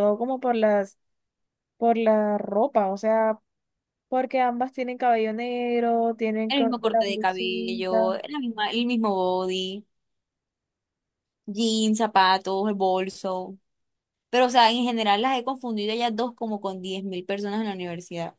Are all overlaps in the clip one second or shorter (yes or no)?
no